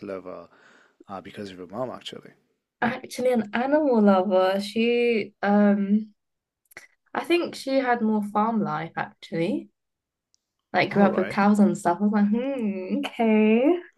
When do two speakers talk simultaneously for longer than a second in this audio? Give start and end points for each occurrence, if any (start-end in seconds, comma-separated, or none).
none